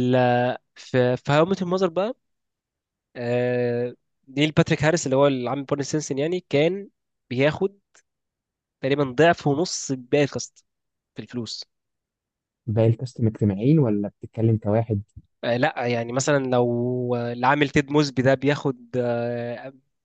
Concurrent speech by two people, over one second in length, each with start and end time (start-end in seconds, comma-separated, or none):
none